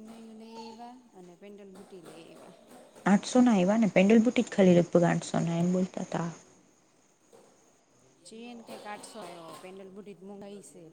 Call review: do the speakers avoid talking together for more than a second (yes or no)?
yes